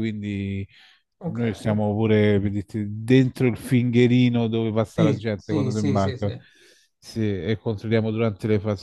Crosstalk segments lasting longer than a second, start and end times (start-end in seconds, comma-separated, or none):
4.8-6.3